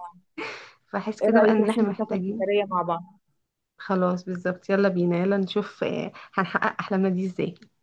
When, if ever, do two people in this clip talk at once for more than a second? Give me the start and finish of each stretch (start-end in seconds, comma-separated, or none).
1.2-2.5